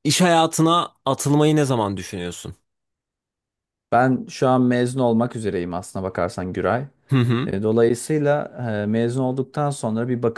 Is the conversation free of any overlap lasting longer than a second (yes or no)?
yes